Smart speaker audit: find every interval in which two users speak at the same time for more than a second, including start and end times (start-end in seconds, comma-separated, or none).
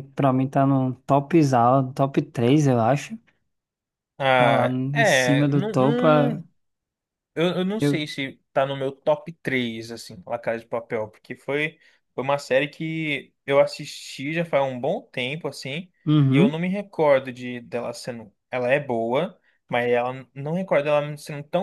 4.3-6.1